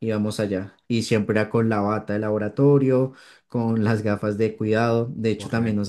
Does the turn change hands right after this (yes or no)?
no